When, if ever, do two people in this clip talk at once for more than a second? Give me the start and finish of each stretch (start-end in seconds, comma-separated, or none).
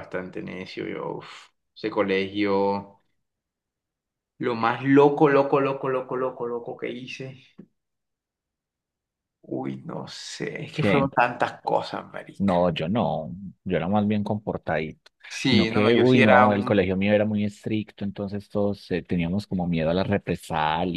15.3-16.8